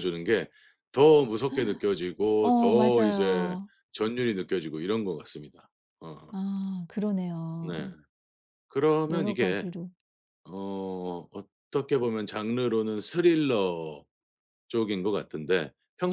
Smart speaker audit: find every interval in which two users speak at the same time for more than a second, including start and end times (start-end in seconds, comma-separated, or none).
2.4-3.7